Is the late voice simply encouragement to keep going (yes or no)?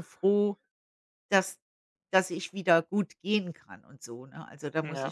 no